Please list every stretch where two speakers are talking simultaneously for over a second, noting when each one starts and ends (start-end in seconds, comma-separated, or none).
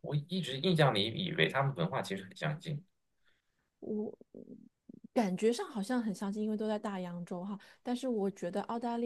none